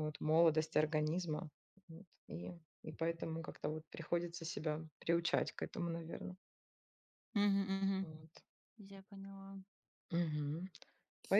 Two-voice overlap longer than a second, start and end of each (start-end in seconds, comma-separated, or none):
none